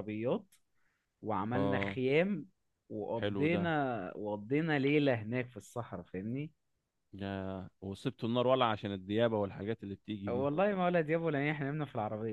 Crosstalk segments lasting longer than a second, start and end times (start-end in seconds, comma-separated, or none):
none